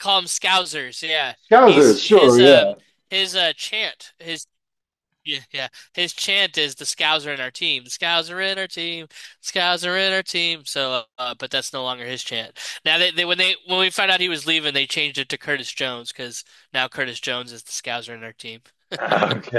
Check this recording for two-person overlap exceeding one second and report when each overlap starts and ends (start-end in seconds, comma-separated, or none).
1.4-2.7